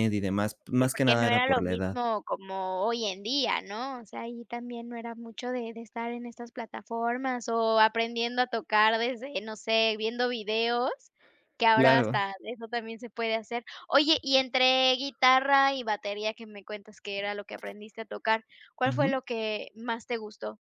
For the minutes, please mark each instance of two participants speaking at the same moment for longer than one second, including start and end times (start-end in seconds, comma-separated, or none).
0.8-2.0